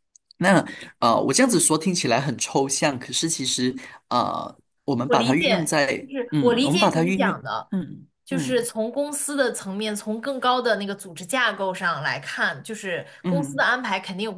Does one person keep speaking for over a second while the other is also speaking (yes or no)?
yes